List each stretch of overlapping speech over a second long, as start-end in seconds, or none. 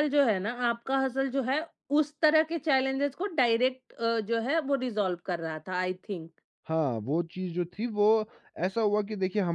none